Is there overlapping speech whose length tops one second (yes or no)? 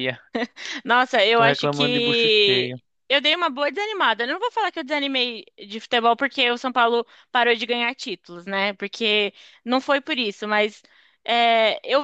yes